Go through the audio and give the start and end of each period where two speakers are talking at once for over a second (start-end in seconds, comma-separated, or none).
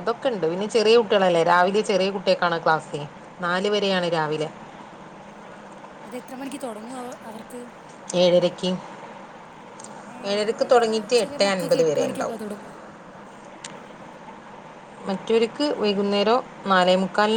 10.3-12.4